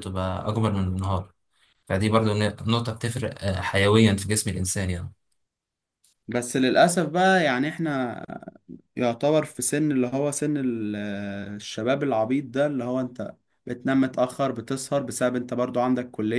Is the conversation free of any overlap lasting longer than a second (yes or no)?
yes